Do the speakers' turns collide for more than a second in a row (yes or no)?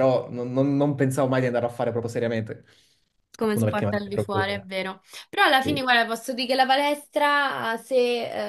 yes